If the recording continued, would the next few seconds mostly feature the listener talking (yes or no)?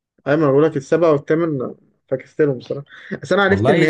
no